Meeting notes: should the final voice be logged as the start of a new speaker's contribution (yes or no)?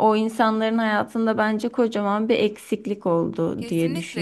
yes